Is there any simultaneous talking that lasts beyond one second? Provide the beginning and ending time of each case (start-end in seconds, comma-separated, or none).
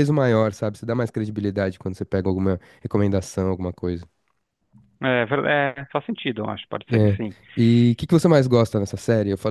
none